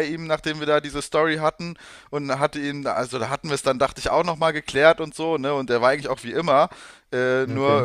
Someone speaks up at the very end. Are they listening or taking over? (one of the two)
listening